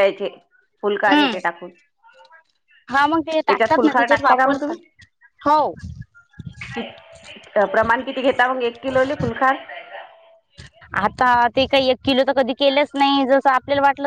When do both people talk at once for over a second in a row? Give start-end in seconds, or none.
3.5-4.8